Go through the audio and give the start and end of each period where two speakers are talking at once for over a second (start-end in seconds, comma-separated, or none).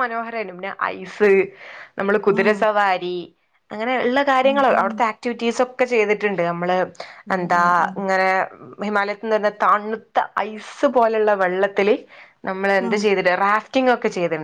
none